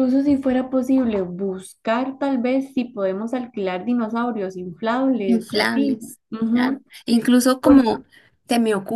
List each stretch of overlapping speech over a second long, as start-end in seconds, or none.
5.2-6.8